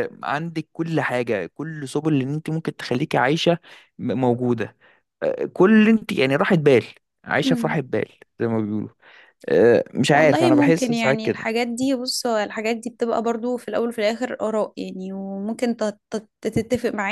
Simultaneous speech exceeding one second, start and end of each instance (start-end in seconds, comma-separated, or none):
10.1-11.4